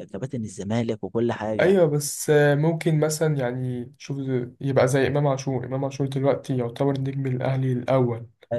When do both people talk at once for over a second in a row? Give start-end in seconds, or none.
none